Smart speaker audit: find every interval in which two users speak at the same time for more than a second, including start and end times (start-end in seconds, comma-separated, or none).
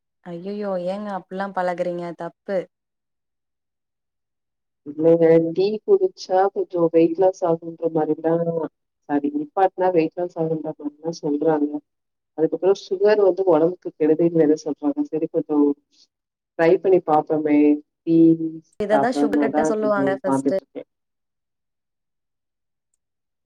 18.9-20.6